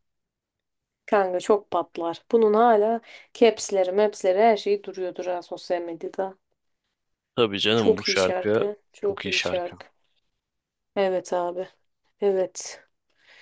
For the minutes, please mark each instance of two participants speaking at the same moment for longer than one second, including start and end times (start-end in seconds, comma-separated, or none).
7.8-9.8